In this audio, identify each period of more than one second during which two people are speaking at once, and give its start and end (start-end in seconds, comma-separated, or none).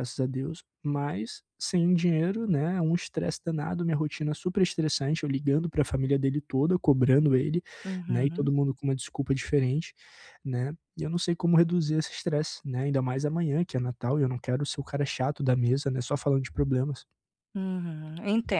none